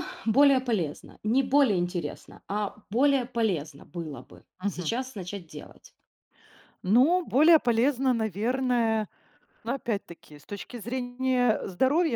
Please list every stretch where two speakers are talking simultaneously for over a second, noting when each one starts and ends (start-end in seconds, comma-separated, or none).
none